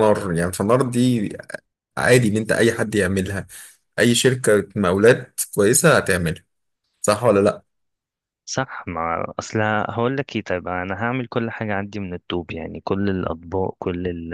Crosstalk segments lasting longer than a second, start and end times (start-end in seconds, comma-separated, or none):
none